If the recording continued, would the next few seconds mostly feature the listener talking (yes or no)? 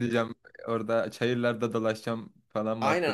yes